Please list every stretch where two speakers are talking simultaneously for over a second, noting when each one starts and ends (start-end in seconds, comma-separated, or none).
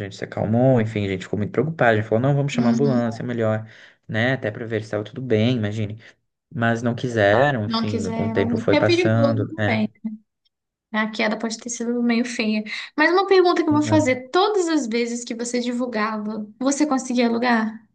7.6-9.9